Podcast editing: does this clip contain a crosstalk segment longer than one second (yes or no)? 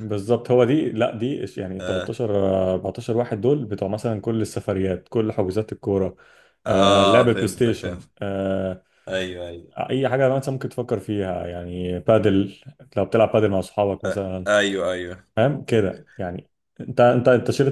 yes